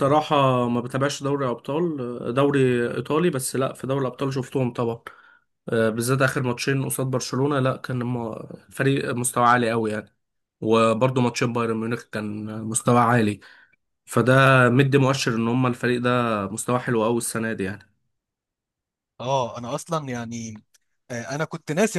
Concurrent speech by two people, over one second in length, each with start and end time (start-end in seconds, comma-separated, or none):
none